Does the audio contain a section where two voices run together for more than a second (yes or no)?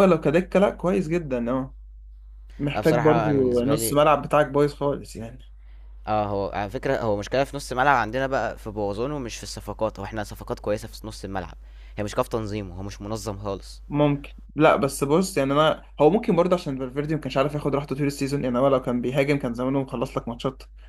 yes